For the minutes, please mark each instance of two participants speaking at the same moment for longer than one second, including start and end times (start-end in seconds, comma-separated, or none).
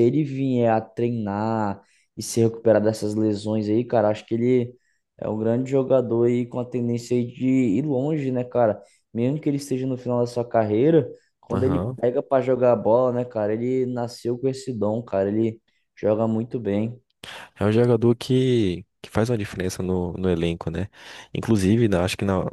none